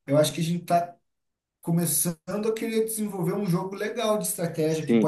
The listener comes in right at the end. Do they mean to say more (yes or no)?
yes